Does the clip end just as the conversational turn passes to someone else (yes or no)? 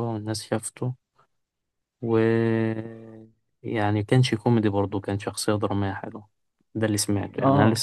yes